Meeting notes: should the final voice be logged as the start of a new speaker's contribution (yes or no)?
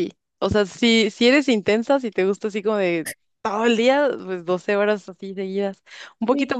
no